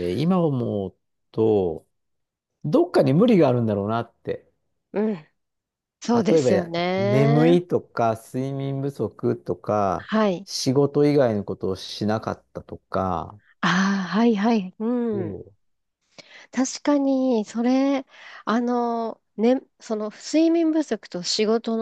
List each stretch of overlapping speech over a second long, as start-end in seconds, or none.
6.3-7.6